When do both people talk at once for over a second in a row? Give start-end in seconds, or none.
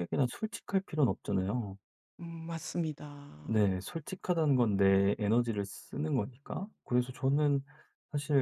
none